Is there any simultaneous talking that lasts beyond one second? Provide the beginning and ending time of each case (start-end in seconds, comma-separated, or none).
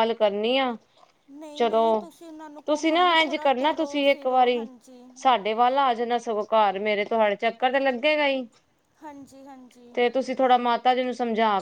2.7-4.6